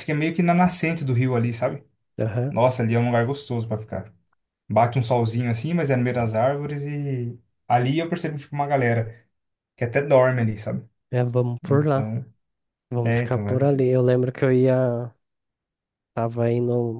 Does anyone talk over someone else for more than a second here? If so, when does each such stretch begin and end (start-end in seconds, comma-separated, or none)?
none